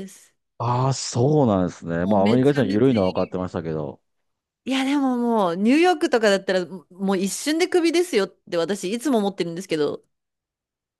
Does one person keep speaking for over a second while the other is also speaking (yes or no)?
yes